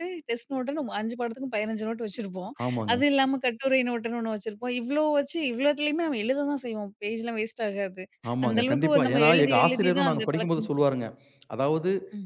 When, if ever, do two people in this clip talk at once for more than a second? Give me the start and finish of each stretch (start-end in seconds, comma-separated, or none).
8.5-10.7